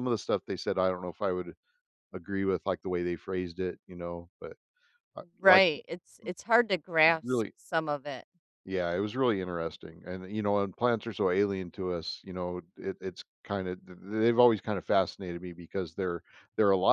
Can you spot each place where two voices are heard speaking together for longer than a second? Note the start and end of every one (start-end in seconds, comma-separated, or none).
none